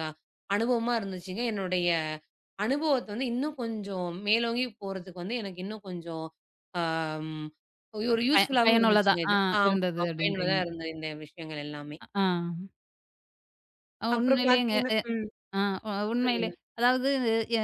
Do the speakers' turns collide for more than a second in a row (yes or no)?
yes